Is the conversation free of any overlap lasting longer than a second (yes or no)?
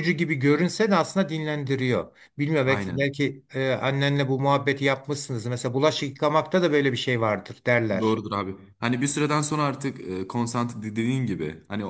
yes